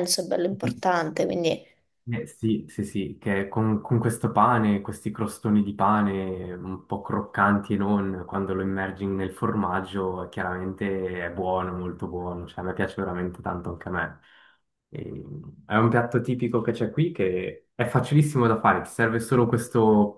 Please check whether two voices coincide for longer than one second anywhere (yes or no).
no